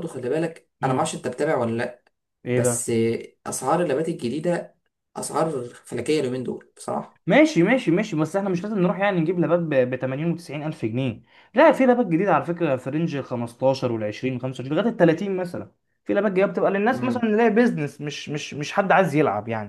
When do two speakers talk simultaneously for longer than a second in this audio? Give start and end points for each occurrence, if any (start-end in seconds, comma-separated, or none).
none